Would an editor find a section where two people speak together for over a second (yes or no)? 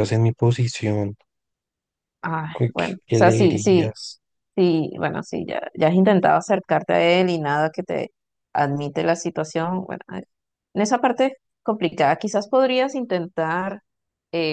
yes